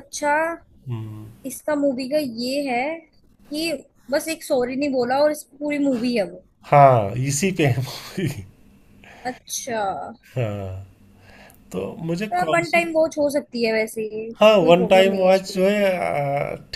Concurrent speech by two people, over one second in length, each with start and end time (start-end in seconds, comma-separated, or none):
14.4-15.9